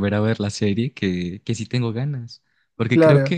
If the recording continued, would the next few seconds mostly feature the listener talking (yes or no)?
no